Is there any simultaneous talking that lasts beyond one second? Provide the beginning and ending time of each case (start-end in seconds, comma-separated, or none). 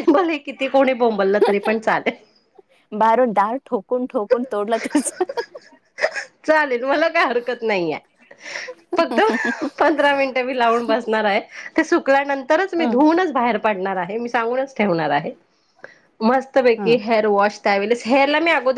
none